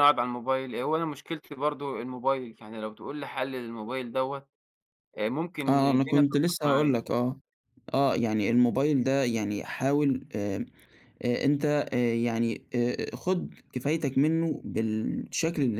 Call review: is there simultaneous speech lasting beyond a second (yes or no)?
yes